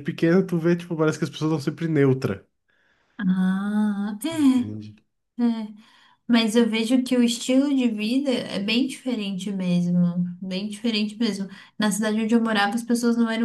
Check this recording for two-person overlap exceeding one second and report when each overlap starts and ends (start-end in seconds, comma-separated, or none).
none